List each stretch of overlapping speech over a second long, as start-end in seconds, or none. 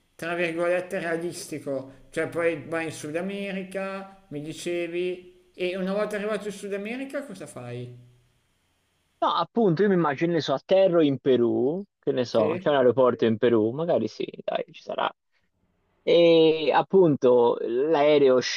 none